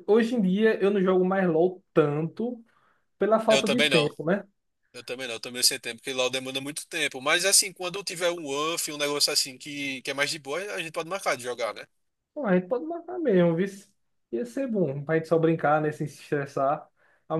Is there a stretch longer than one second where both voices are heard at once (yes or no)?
no